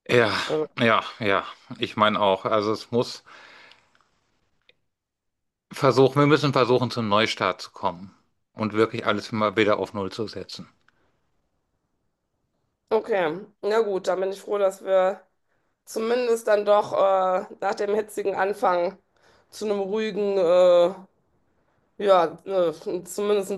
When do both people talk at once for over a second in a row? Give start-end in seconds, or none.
none